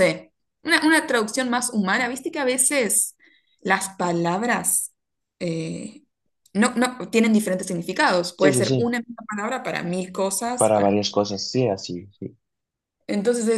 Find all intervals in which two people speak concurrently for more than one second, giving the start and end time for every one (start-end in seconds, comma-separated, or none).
none